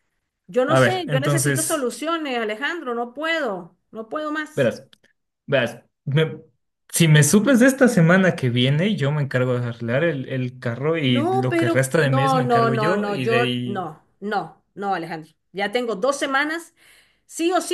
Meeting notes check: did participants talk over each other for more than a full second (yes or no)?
yes